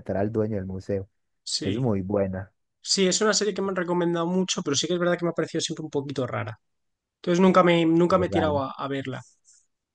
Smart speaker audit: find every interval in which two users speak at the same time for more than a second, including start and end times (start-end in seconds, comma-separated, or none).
none